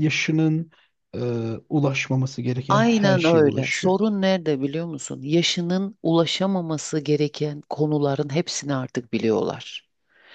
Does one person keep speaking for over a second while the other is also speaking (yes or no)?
yes